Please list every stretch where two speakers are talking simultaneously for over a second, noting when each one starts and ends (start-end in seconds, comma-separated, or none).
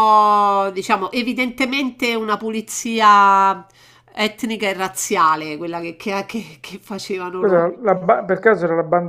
none